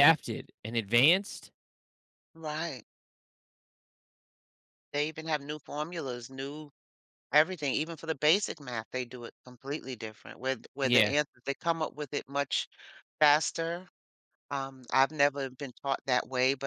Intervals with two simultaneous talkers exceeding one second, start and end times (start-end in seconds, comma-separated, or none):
none